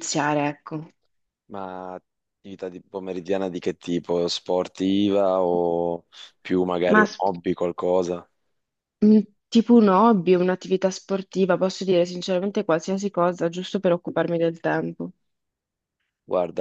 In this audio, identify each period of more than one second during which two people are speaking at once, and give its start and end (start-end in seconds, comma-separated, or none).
none